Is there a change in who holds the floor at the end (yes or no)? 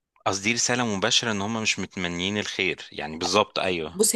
yes